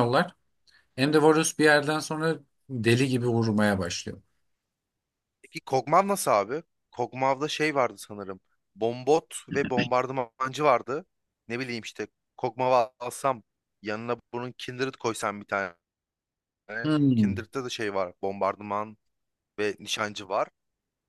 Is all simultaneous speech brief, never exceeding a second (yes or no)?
yes